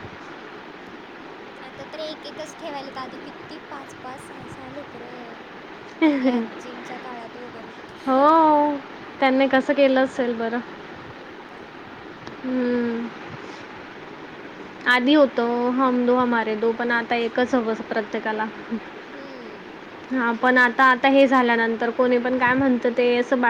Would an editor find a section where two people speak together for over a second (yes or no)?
no